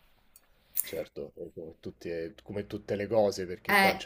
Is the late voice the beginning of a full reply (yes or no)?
no